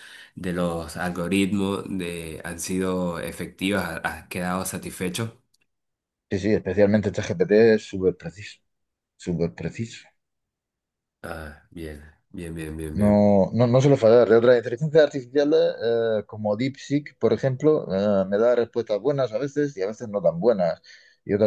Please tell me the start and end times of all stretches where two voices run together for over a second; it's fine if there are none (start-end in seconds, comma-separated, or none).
none